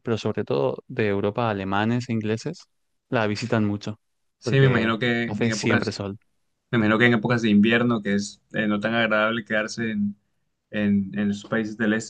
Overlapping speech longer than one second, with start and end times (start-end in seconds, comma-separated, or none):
4.4-6.0